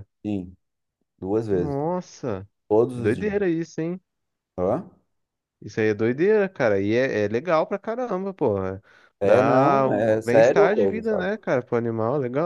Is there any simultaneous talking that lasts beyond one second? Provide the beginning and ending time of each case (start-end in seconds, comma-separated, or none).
9.2-11.3